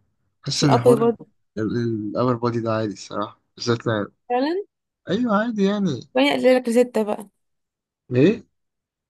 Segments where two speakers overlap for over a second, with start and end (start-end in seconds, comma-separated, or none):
none